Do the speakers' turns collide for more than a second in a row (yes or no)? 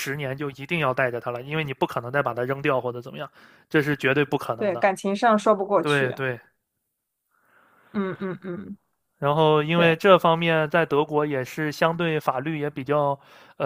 no